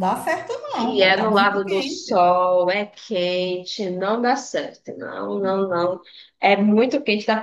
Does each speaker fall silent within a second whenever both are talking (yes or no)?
no